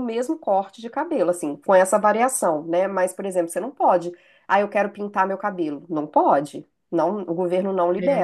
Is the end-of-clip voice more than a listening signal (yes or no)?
yes